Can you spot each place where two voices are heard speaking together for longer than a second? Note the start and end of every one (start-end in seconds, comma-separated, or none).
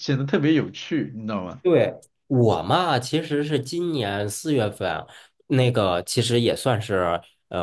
none